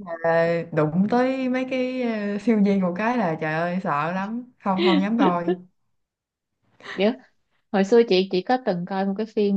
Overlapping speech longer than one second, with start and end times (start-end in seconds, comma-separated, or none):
none